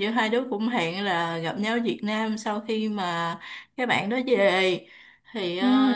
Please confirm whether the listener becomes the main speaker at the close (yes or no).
no